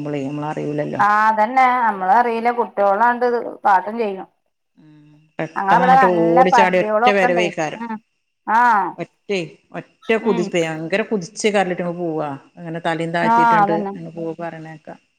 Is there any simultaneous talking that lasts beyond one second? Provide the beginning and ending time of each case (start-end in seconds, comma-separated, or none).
5.6-7.4